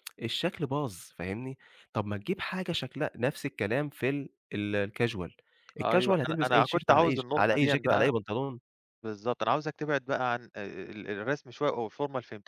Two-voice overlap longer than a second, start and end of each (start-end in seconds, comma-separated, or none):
5.8-8.1